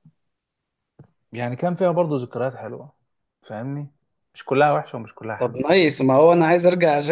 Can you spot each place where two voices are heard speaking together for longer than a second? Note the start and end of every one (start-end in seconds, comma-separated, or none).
none